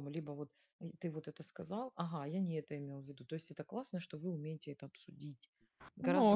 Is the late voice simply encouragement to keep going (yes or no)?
no